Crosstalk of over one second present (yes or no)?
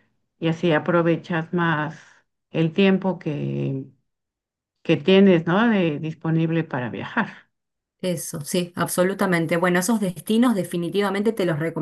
no